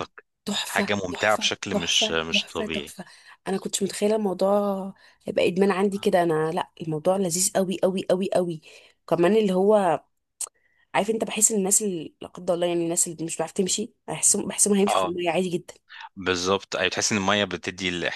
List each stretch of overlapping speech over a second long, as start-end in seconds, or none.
0.7-3.0